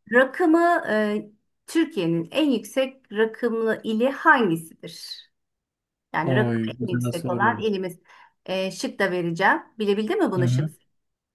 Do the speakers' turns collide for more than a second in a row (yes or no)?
yes